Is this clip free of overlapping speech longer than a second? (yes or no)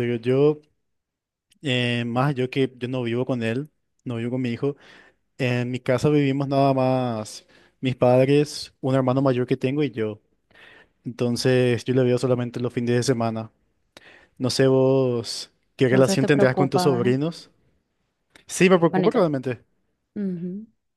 no